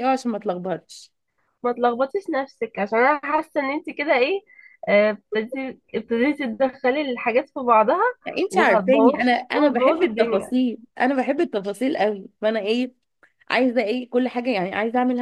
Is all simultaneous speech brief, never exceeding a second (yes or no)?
no